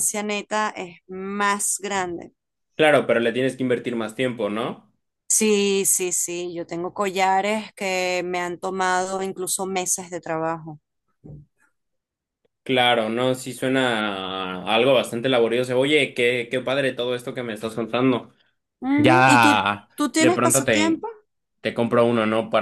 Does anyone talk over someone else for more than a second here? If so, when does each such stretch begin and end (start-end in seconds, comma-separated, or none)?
19.0-21.0